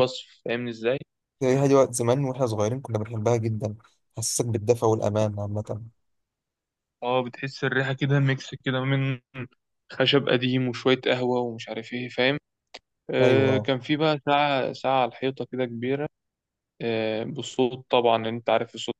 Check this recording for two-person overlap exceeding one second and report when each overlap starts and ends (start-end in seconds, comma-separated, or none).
none